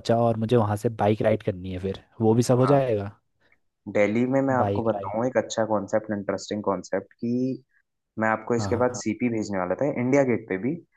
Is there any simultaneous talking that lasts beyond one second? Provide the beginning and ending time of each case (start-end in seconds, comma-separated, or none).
none